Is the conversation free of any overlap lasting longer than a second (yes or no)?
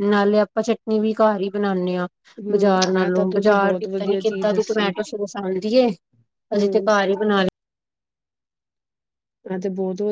no